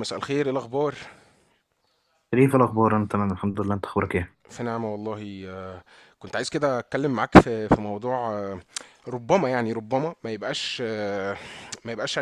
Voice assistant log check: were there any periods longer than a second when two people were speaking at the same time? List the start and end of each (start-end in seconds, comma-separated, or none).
none